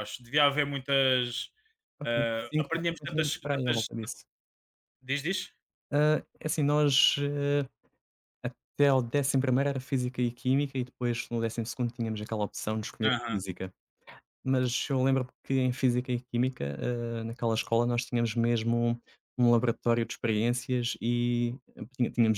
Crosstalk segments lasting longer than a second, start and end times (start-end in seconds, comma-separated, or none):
2.0-3.9